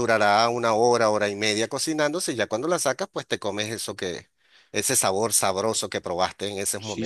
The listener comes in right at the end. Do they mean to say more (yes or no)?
yes